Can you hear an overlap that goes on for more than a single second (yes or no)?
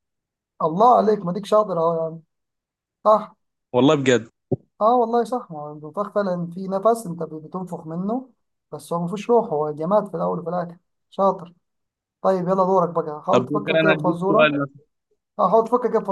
yes